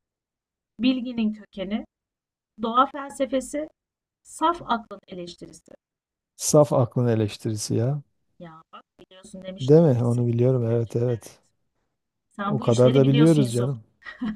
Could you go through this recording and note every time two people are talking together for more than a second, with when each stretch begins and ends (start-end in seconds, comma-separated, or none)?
9.6-11.3, 12.4-13.7